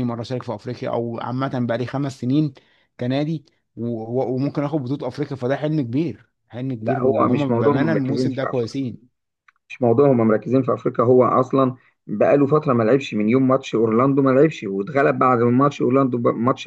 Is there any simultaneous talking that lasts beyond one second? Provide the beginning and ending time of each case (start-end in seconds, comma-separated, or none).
6.8-8.7